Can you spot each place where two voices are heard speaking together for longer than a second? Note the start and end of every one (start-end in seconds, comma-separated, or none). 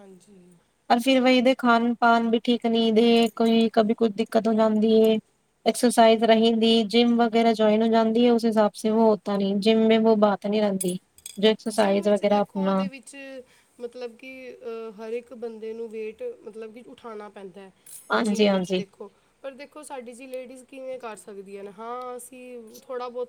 none